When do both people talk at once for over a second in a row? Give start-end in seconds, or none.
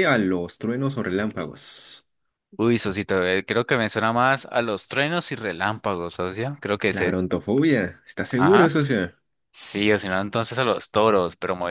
none